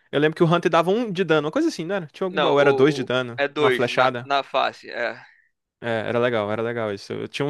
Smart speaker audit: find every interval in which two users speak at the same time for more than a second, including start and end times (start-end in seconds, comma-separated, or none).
2.3-4.3